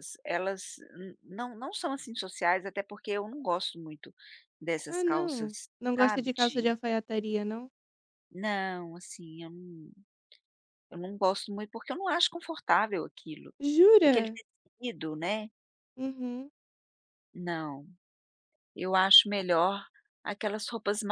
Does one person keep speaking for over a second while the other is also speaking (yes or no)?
yes